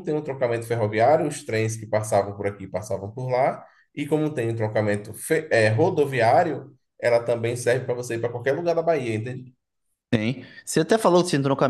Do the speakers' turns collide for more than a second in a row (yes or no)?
no